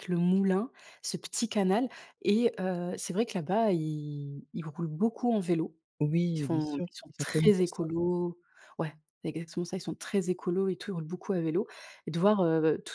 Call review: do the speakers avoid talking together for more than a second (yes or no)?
no